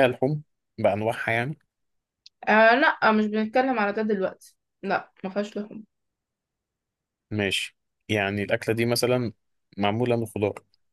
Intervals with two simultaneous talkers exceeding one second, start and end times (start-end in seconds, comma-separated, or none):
none